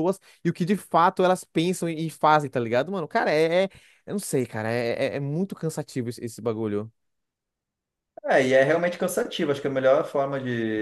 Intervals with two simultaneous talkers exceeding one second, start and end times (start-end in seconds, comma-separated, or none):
none